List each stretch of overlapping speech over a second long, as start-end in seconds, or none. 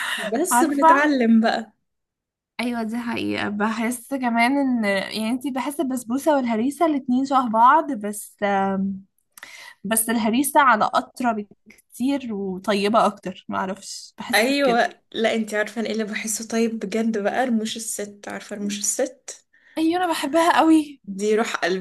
none